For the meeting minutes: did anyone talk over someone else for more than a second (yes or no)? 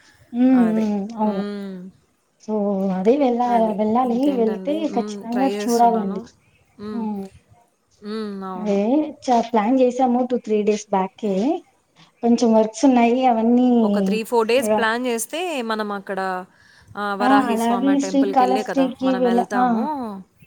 yes